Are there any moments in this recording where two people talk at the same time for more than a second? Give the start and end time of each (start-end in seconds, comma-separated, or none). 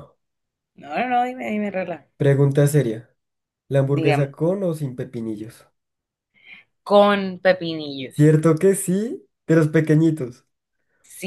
none